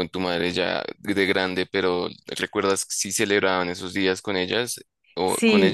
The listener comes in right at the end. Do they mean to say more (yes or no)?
yes